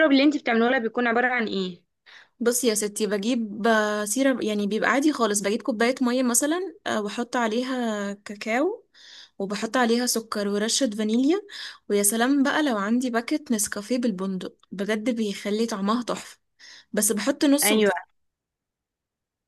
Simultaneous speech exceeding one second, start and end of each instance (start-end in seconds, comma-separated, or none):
none